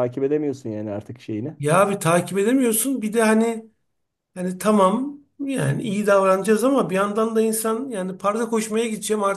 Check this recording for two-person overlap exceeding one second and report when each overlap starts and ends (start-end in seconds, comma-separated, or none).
none